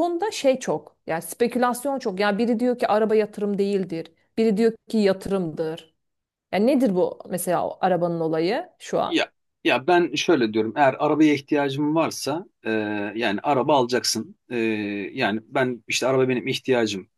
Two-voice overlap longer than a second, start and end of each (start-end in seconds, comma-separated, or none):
none